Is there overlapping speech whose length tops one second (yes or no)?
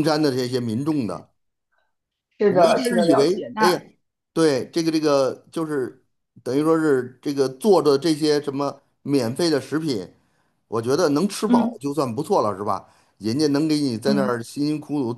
yes